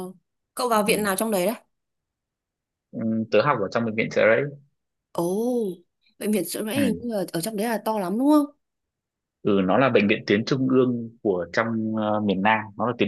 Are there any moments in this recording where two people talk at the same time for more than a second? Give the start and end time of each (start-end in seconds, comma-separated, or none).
none